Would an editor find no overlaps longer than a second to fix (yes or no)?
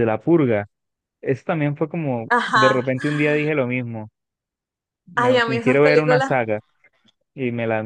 no